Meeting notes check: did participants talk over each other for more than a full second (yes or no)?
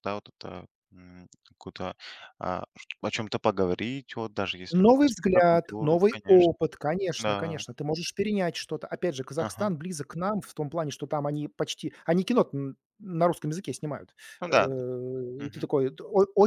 yes